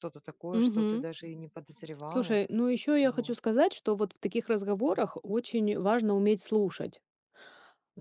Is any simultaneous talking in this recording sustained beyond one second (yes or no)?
no